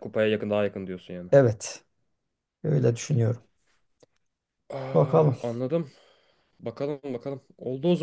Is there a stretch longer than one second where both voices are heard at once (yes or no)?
no